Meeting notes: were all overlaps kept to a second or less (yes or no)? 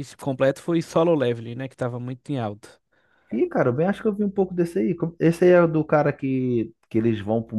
yes